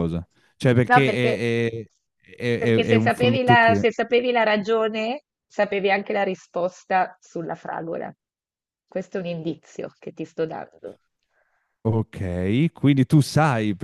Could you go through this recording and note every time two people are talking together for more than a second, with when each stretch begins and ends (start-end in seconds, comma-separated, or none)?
2.6-3.9